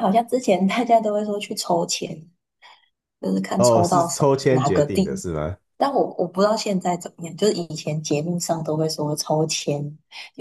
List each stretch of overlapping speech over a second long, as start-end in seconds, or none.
3.6-5.1